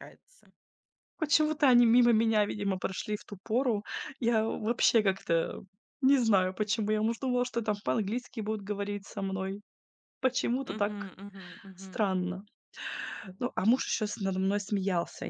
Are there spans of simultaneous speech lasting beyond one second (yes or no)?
no